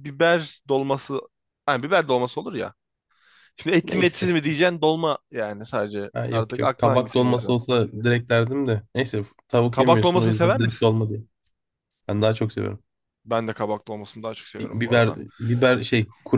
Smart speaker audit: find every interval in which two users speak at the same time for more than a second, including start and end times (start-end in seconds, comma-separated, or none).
6.1-7.5, 9.7-10.9